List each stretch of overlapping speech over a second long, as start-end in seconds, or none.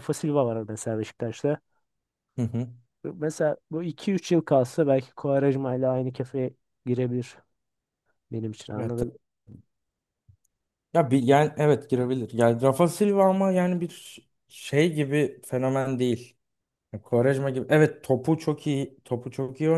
none